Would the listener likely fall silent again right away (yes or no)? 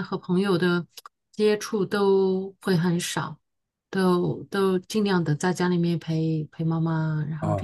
no